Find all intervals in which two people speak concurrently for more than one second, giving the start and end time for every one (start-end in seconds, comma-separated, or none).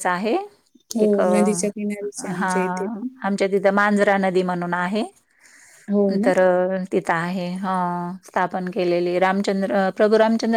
1.0-2.5